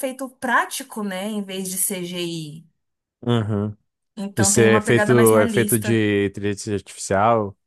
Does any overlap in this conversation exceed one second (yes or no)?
yes